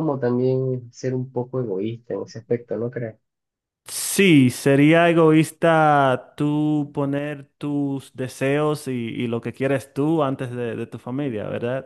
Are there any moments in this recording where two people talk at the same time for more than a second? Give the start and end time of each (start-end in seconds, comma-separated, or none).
none